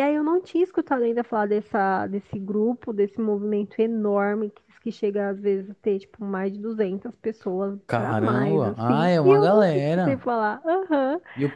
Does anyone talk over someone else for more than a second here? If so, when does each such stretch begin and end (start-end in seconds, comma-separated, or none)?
7.9-10.3